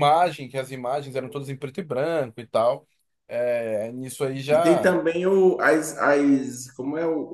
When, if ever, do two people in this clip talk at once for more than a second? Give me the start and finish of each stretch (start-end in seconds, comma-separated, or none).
none